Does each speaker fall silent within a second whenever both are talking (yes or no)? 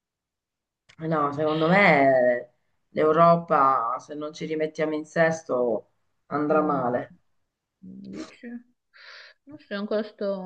yes